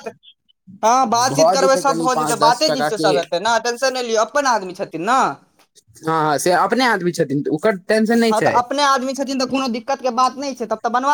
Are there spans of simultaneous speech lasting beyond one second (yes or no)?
yes